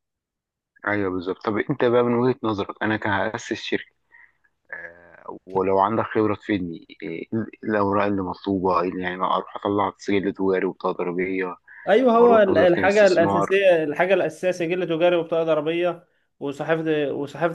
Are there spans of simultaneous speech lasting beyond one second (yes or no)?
yes